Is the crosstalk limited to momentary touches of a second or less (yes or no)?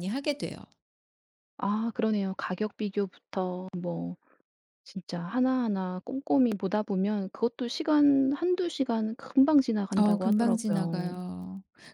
no